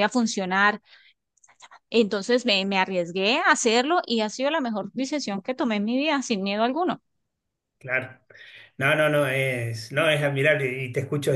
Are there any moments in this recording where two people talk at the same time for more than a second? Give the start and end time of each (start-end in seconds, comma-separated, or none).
none